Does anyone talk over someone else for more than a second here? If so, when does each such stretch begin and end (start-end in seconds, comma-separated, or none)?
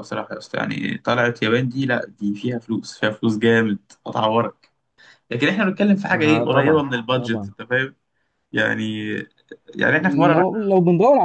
6.1-7.5